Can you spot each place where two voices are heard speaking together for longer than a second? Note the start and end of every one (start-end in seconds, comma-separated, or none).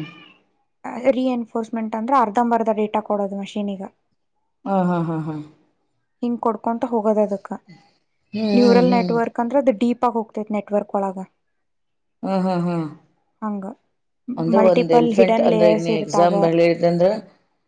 14.6-16.3